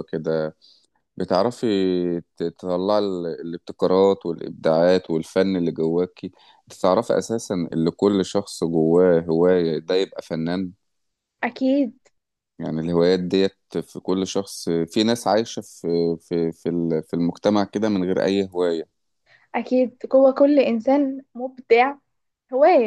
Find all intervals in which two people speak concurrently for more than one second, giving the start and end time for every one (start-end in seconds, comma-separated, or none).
none